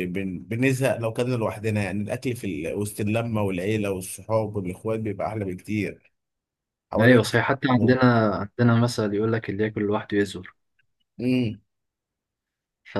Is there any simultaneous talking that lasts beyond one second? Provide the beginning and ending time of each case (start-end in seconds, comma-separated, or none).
none